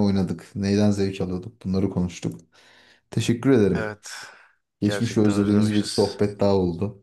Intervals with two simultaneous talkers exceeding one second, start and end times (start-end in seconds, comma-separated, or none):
4.8-6.2